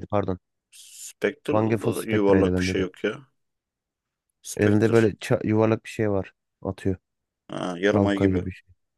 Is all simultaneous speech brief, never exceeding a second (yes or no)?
no